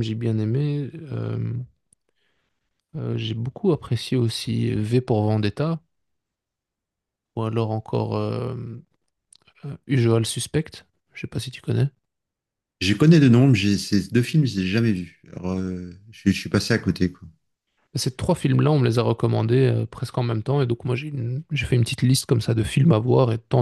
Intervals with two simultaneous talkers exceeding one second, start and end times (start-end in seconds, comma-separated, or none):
none